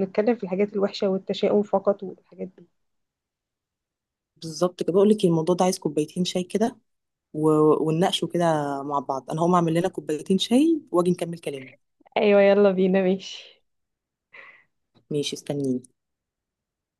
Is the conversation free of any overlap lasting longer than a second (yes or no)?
yes